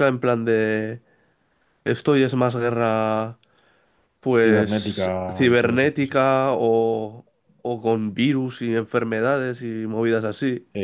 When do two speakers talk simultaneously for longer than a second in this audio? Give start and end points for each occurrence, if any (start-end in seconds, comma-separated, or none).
4.4-6.3